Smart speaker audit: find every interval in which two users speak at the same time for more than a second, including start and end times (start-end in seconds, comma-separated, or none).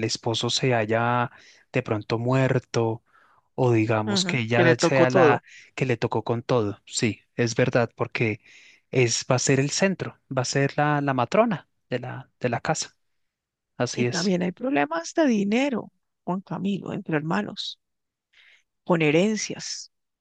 4.0-5.4